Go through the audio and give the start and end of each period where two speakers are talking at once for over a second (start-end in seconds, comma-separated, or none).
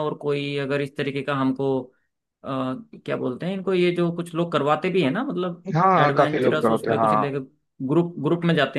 5.7-7.3